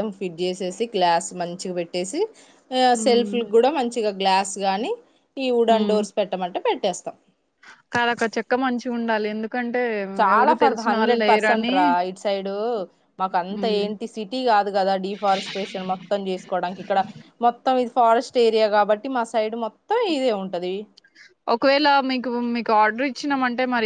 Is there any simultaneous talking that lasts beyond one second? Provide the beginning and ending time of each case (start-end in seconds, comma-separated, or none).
none